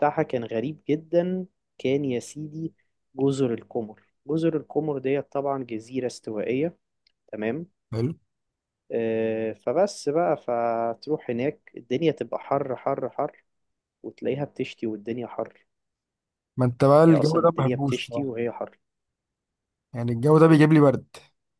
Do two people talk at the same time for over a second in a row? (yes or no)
yes